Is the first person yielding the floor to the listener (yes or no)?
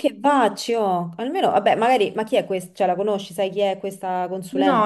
yes